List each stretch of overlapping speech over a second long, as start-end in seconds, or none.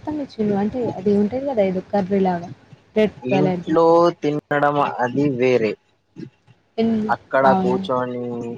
none